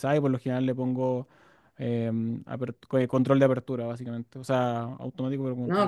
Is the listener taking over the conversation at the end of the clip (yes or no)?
yes